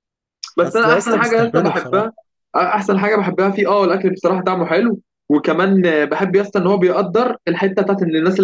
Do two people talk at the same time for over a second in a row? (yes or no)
yes